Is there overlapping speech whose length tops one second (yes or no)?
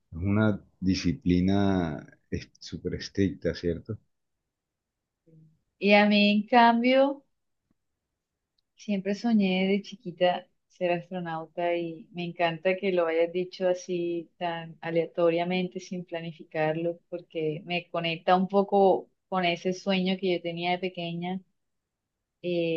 no